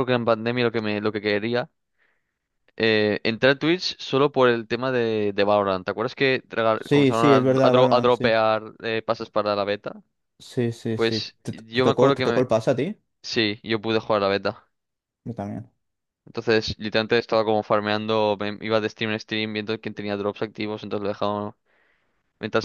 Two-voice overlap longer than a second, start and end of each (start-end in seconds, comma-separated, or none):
6.8-8.3, 10.9-12.4